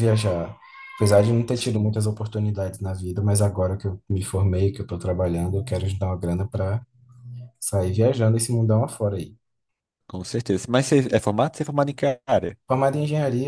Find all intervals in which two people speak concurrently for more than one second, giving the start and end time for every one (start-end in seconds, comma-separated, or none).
none